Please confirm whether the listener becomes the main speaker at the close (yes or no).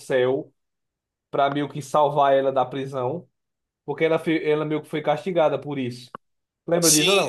yes